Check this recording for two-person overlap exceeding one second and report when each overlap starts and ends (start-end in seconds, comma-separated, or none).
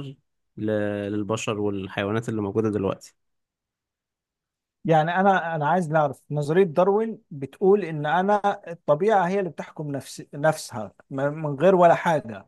none